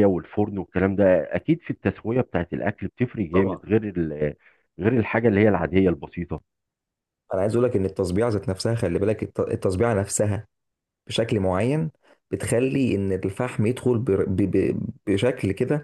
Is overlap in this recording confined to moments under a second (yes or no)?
yes